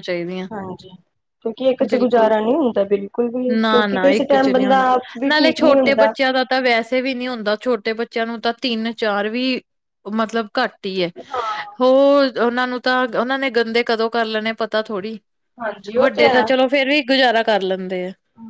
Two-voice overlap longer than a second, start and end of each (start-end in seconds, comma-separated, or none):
3.6-6.1